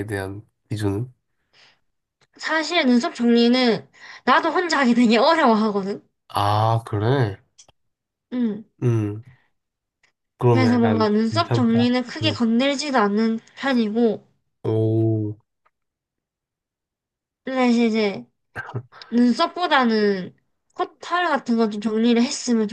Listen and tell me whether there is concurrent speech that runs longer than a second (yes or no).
yes